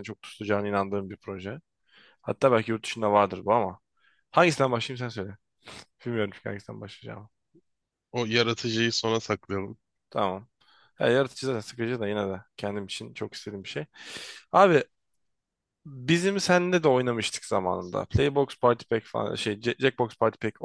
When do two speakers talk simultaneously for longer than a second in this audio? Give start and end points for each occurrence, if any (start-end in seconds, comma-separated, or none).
none